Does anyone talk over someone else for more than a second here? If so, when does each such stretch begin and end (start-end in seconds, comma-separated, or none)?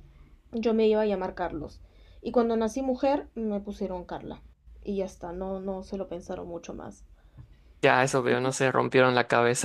none